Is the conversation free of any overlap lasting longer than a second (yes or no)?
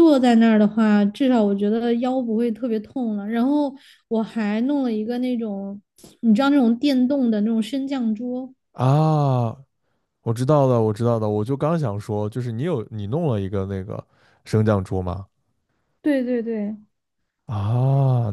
yes